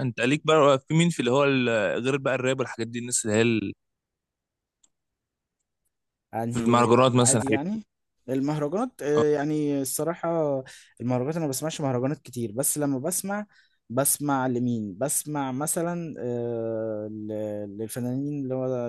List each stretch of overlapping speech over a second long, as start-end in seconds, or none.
6.5-7.8